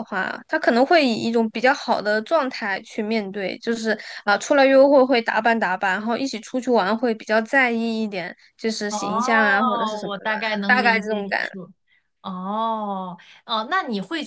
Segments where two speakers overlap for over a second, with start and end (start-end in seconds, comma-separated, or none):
8.9-11.5